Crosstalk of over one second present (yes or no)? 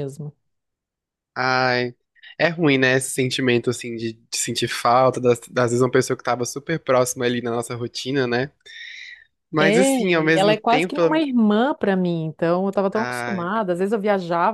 yes